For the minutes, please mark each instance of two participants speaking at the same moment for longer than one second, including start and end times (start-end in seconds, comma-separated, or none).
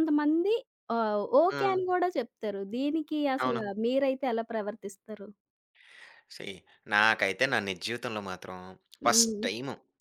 none